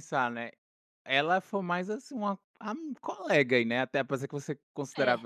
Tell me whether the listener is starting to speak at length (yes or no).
no